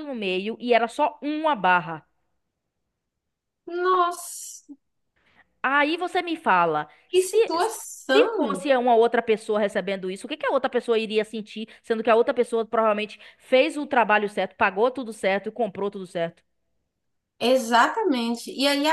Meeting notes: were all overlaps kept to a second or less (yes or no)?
yes